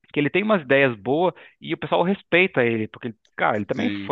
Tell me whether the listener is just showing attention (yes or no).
yes